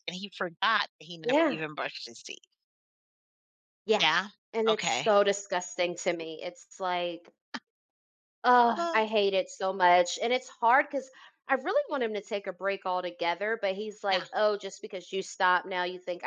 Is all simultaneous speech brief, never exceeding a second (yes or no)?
yes